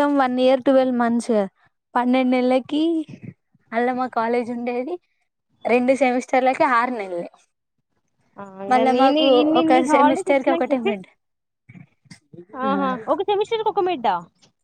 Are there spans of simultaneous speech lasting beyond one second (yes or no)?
yes